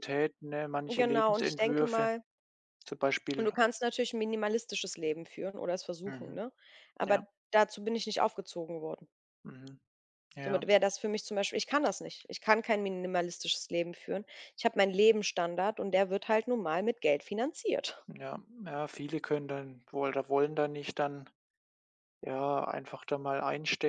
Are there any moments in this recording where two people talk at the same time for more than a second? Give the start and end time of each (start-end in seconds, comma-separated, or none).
0.9-2.1